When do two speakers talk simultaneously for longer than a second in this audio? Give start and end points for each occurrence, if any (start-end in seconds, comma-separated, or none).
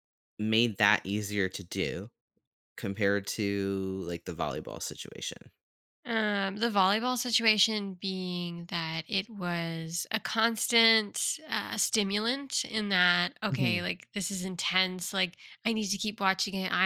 none